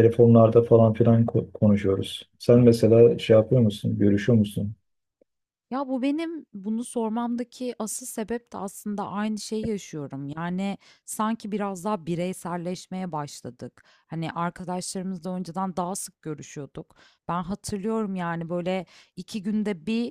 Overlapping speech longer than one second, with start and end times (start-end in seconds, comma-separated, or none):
none